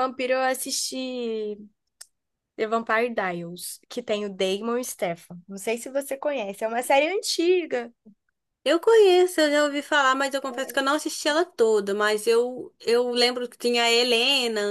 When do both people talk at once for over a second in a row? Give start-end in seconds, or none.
none